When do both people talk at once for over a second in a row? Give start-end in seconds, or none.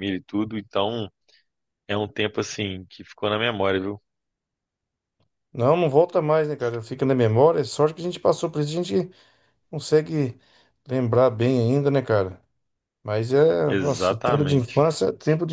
13.7-14.9